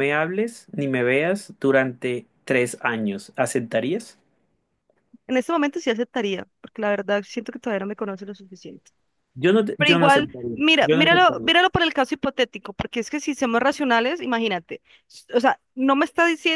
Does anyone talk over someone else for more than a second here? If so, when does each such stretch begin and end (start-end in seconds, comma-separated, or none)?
9.8-11.5